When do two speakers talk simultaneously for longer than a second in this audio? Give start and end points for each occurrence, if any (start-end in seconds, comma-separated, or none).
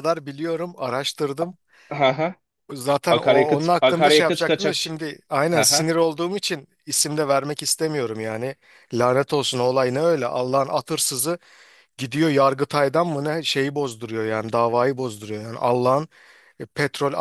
3.1-4.8